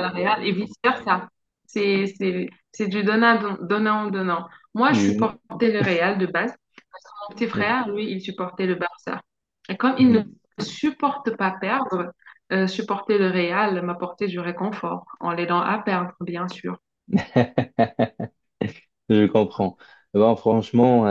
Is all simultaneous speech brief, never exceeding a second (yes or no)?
yes